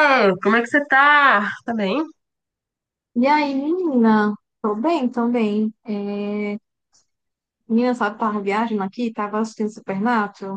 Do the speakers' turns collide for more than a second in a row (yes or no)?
no